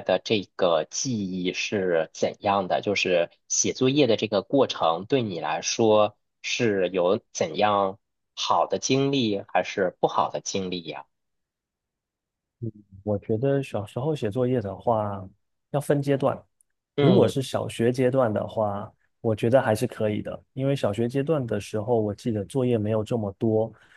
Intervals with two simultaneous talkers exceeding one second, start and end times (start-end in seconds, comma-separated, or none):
none